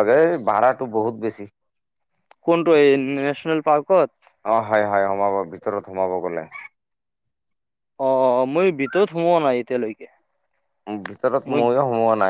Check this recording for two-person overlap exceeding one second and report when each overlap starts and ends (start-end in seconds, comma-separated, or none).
none